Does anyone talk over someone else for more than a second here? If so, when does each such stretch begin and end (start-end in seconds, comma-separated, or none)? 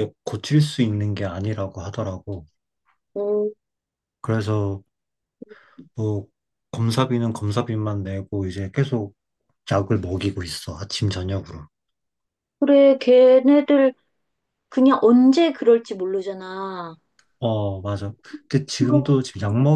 none